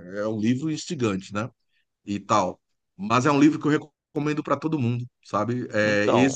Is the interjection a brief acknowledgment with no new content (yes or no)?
yes